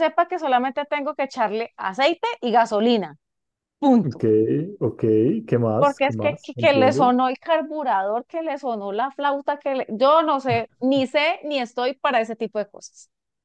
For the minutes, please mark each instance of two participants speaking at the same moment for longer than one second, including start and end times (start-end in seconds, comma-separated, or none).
5.8-7.1